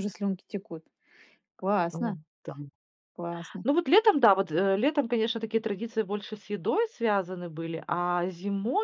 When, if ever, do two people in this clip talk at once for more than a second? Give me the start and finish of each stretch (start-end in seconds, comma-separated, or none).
none